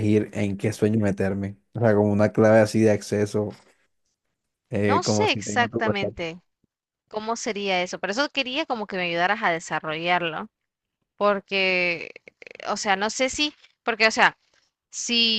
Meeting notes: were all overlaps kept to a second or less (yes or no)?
no